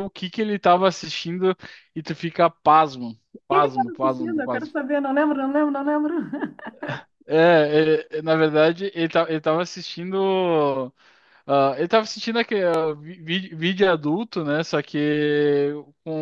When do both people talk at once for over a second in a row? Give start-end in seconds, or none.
3.5-4.7